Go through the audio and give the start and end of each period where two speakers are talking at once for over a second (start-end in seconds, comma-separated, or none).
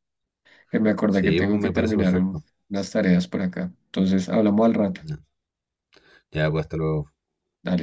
1.1-2.4